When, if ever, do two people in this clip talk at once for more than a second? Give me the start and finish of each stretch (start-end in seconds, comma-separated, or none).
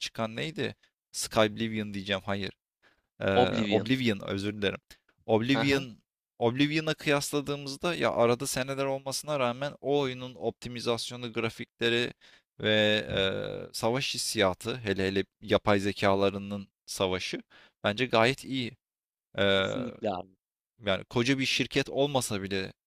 none